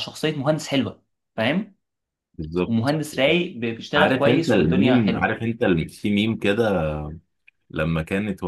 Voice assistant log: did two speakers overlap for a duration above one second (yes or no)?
yes